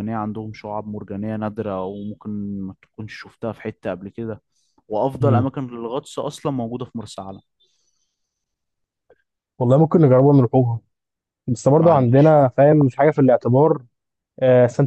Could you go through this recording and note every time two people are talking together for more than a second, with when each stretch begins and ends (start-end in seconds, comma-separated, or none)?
11.8-13.3